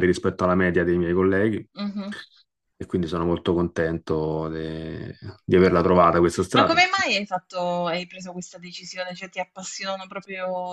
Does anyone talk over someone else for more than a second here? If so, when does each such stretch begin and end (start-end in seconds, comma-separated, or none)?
none